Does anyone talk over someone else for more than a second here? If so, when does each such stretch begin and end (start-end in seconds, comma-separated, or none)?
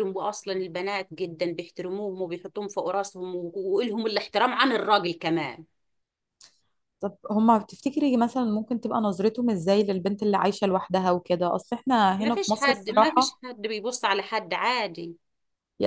12.2-13.4